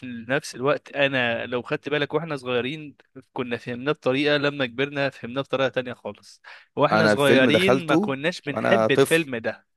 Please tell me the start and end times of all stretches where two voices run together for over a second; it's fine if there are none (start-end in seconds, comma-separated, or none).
6.9-9.3